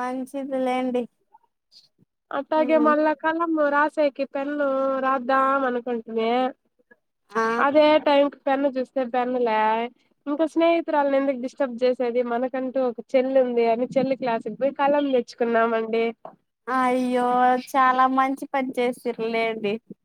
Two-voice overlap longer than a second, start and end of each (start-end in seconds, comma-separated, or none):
none